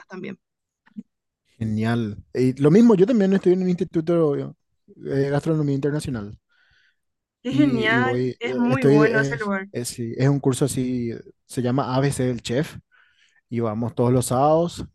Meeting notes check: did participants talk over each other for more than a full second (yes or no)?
yes